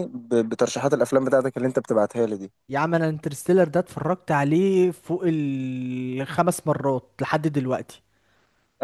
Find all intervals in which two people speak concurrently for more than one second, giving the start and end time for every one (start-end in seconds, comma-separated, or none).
none